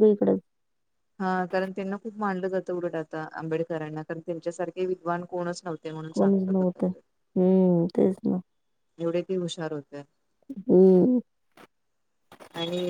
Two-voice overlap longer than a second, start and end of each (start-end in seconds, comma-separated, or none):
none